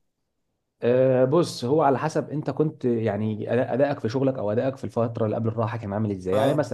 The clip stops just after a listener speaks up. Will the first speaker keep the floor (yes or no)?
yes